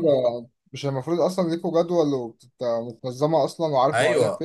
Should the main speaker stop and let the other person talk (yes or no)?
yes